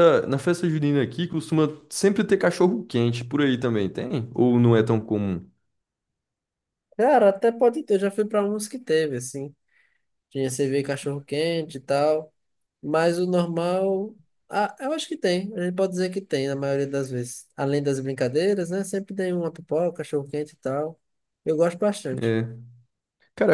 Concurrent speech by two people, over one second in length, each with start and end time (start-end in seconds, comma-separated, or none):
none